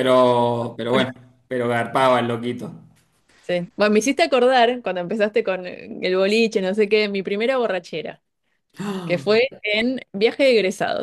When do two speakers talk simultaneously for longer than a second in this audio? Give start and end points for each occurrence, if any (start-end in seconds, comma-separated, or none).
none